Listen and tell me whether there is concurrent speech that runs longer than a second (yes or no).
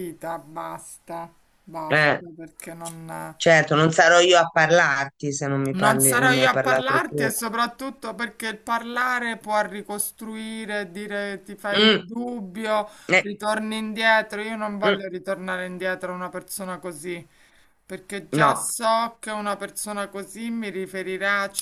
yes